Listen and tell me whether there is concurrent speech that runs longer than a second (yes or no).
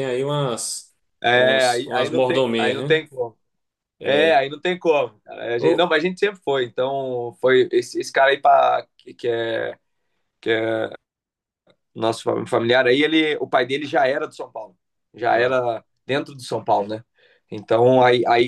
yes